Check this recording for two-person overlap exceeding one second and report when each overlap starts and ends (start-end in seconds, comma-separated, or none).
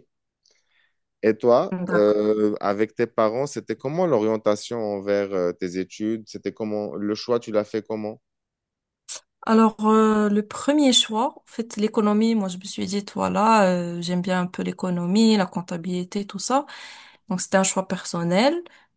none